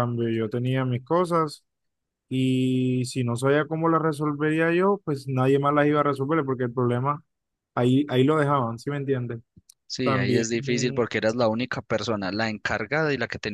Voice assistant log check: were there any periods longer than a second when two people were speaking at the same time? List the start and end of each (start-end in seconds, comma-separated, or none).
none